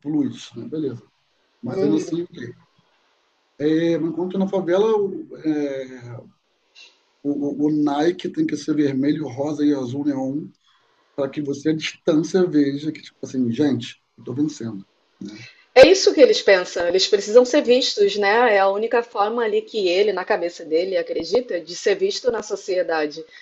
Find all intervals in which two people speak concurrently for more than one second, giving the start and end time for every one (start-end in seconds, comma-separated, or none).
none